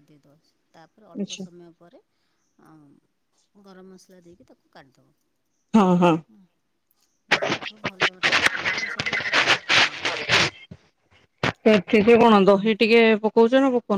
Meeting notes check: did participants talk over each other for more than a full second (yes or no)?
no